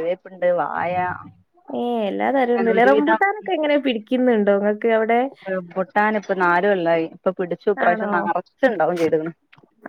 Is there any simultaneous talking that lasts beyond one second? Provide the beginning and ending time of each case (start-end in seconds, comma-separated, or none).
none